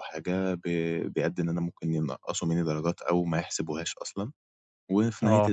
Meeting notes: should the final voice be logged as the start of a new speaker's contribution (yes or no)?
no